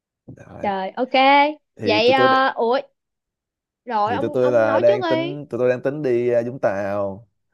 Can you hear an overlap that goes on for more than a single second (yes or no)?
yes